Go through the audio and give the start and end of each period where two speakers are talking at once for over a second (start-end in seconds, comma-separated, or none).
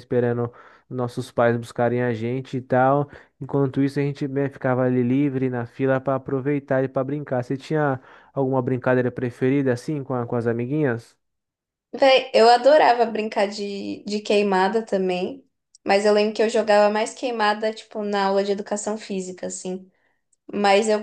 none